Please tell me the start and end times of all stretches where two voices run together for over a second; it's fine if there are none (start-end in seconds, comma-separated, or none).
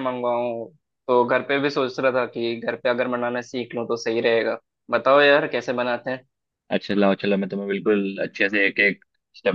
none